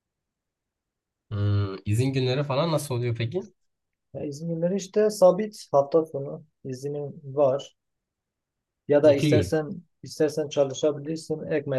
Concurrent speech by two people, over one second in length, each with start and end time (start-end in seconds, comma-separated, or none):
none